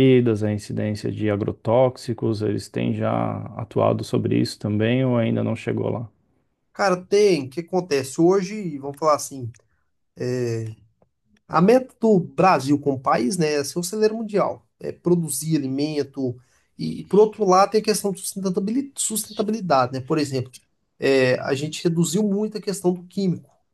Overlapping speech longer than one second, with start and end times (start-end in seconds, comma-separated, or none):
none